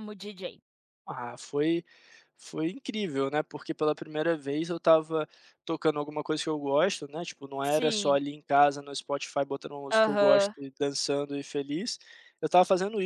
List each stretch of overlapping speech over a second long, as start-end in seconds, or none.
none